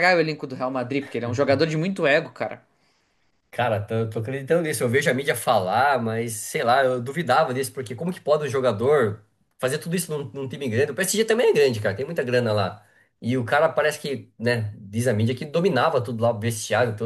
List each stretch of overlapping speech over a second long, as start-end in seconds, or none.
none